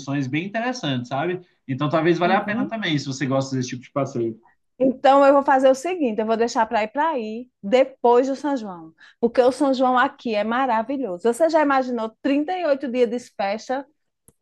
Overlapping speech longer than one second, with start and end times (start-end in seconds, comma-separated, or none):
none